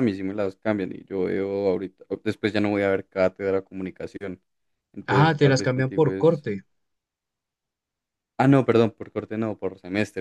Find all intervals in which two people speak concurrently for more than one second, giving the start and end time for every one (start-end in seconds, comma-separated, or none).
5.1-6.4